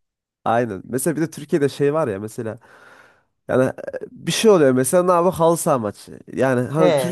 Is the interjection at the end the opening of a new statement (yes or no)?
no